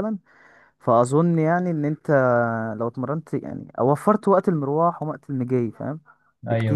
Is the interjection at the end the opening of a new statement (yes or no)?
yes